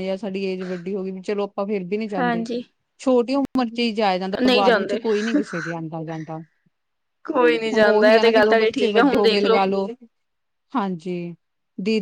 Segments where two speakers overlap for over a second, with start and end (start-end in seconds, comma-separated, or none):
7.8-9.4